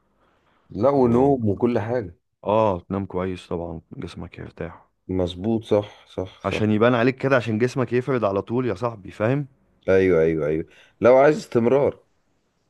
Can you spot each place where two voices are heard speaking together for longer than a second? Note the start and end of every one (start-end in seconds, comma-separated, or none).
none